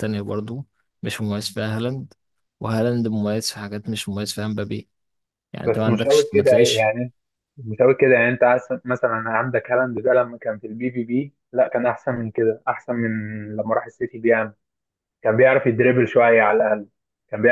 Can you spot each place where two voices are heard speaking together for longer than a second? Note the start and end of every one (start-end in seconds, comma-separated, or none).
5.6-6.9